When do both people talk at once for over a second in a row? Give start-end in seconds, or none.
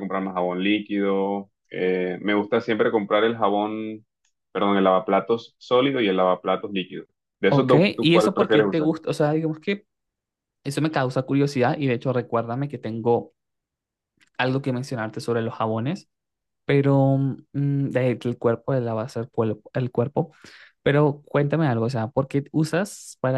7.5-8.9